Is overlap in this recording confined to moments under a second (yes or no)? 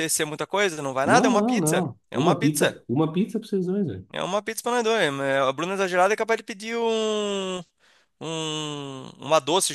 no